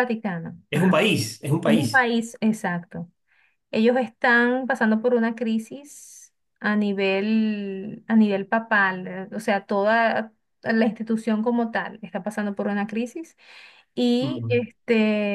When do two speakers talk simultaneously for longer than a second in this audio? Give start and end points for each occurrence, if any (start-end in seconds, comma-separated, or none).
none